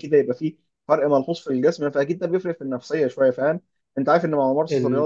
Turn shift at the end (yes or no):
no